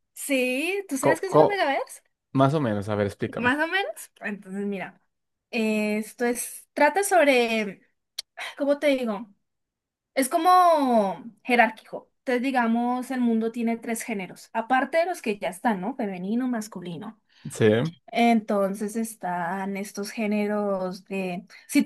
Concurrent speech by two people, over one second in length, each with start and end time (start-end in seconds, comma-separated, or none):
none